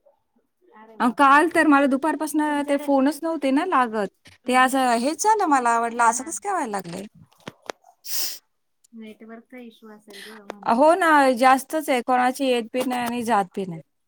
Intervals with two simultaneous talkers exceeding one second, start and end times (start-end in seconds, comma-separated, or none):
none